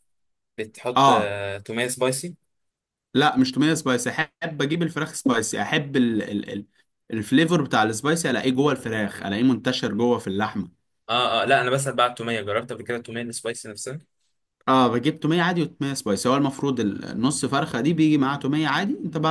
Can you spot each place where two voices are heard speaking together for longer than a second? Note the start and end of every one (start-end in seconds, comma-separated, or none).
none